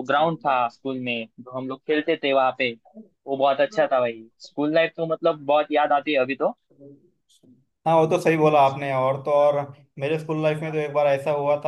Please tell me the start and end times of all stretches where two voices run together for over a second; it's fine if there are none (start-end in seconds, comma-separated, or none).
none